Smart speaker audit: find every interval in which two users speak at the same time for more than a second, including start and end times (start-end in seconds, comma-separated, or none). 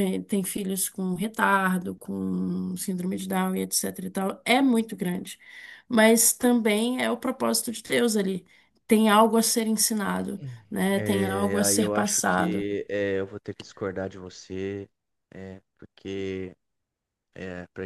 10.9-12.6